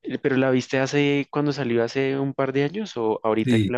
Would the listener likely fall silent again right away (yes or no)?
no